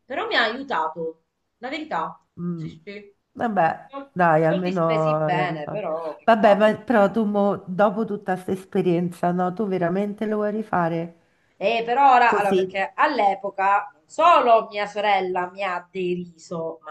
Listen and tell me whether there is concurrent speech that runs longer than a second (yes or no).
yes